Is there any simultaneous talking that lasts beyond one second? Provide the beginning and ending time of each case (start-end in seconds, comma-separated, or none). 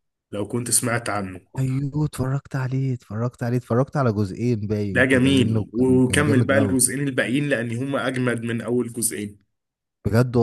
4.9-6.8